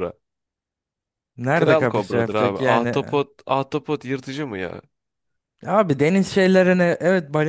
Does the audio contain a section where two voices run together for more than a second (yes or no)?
yes